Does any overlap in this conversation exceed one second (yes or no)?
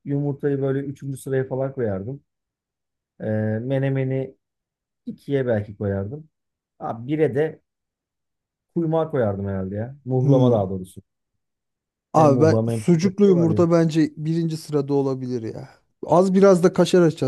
yes